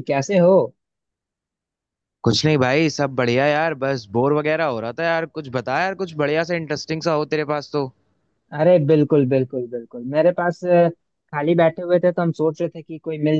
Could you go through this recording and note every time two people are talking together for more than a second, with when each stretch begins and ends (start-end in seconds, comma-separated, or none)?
none